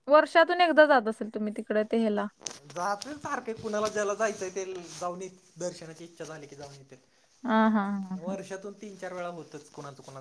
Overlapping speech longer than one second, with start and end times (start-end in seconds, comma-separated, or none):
none